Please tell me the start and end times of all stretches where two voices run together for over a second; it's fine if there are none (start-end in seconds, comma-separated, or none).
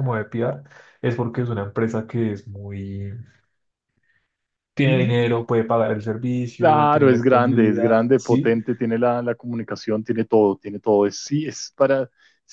6.6-8.5